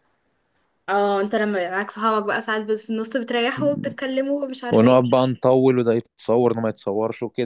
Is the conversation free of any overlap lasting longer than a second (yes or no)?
yes